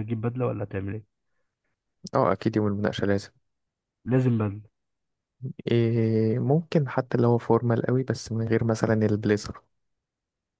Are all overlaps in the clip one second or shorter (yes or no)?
yes